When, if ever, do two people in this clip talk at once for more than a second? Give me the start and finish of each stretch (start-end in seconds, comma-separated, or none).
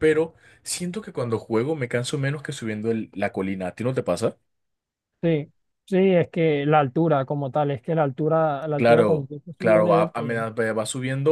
8.8-10.4